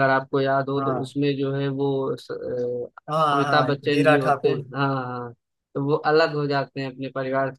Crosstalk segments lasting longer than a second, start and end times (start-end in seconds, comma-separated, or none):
3.1-4.6